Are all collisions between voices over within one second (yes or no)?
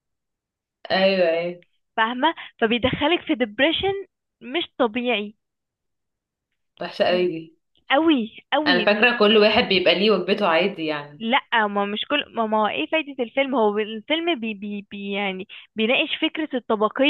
yes